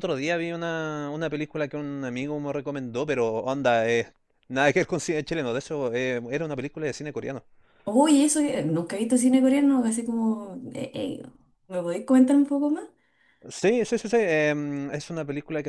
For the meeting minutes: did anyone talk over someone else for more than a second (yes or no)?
no